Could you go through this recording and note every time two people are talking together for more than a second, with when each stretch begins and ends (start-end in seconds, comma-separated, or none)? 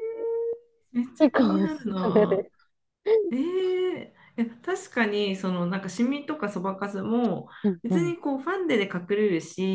1.2-2.5